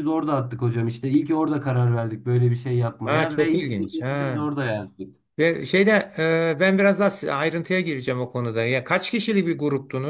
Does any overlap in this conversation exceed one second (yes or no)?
yes